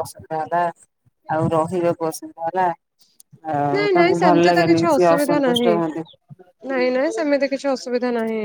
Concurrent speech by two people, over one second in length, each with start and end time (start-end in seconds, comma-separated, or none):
3.7-5.7